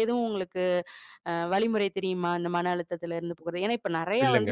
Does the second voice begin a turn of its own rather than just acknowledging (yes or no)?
no